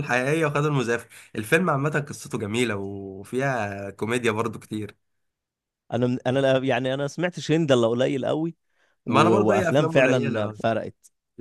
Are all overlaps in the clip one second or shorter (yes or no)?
no